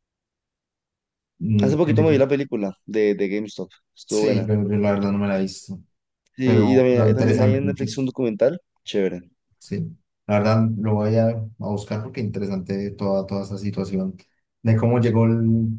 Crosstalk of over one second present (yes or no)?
yes